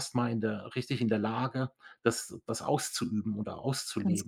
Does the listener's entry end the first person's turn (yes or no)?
yes